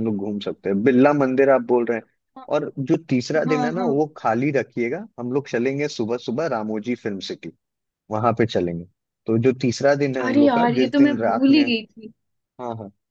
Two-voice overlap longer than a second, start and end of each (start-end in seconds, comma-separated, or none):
10.2-11.7